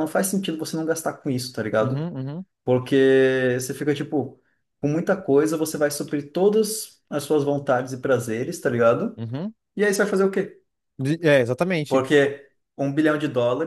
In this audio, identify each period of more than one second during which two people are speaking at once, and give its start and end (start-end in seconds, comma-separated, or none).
none